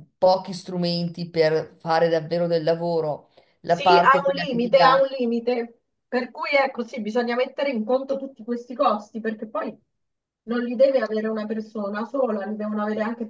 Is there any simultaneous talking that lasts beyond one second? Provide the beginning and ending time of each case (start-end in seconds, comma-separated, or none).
3.6-5.1